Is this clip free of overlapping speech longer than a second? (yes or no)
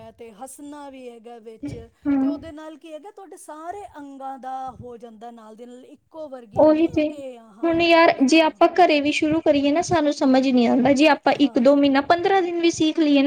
yes